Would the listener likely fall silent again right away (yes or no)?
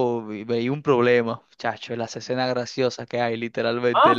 no